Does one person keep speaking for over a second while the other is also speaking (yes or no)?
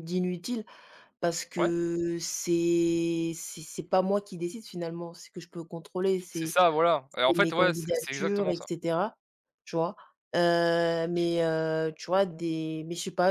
yes